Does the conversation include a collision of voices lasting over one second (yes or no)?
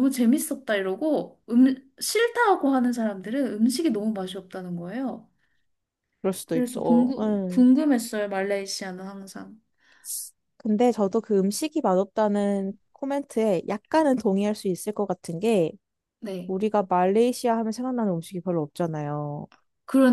yes